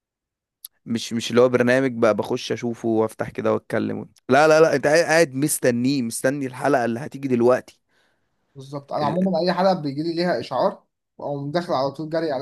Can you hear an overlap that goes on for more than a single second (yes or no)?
no